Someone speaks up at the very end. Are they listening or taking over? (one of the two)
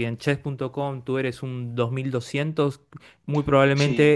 listening